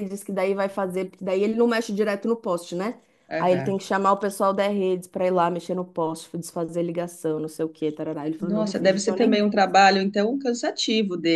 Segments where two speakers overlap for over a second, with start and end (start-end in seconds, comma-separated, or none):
8.4-9.7